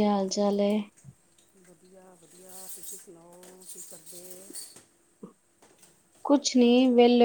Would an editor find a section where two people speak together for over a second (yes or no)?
no